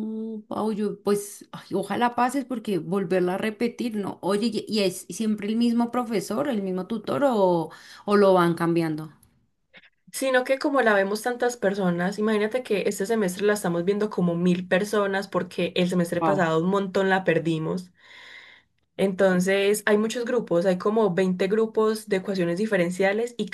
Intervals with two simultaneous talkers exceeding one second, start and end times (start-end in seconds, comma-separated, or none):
none